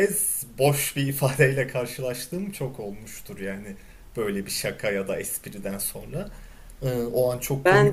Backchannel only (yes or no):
no